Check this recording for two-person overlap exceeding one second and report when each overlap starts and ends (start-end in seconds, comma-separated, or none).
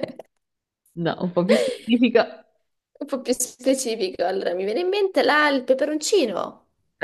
none